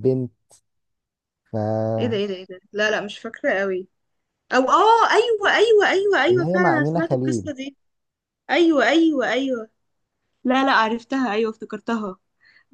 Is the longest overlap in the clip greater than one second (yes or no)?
yes